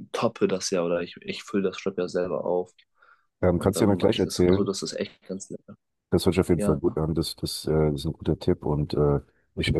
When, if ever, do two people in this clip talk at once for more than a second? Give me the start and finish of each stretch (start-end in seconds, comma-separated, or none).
3.5-4.8